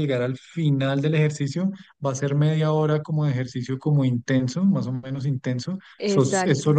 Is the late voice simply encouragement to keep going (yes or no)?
yes